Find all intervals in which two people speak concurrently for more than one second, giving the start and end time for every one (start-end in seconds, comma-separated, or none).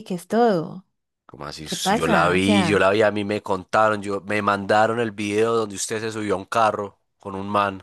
1.6-2.9